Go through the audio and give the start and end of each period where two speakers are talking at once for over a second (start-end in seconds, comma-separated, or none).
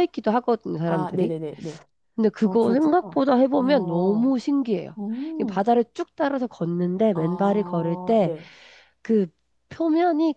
2.4-4.4, 7.1-8.3